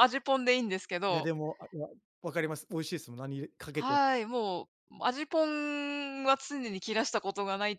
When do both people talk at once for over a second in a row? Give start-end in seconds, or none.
none